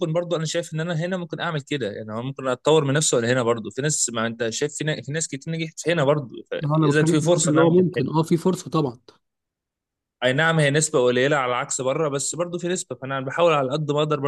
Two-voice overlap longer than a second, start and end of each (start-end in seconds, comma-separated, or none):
6.7-8.1